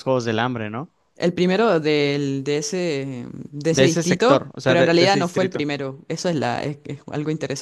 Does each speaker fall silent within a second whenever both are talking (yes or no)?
no